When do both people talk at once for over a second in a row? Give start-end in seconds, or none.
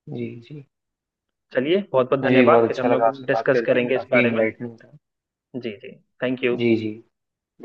2.2-4.4